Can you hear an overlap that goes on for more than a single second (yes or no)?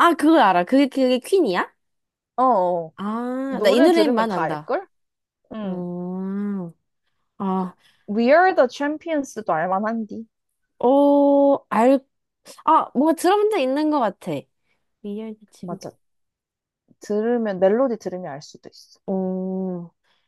yes